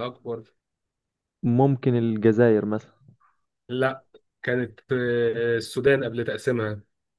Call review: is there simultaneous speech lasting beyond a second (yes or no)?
no